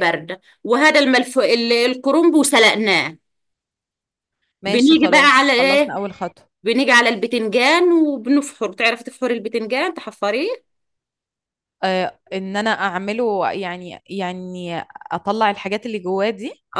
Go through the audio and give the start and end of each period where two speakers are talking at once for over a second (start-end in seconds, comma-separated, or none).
4.7-6.0